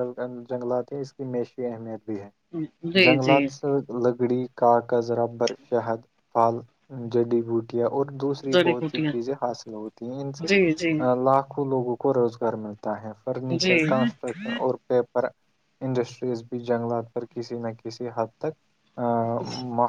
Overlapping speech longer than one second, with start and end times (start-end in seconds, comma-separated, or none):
none